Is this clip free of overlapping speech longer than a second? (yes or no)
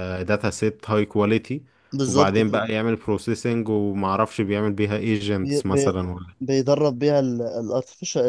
yes